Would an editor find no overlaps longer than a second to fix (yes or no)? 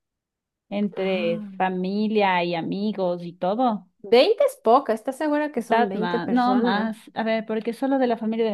no